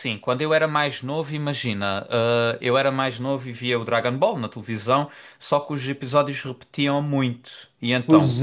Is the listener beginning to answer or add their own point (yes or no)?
yes